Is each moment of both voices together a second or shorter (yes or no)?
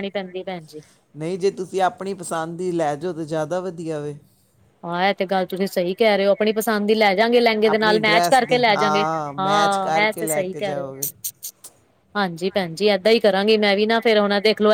no